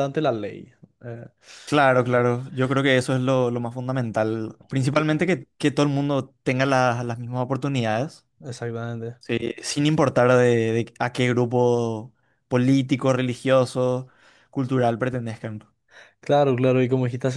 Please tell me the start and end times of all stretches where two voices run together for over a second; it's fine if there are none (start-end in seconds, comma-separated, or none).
none